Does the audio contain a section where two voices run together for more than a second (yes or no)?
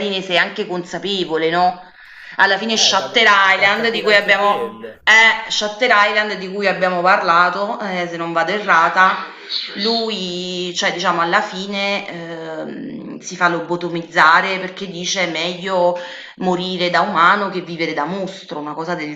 yes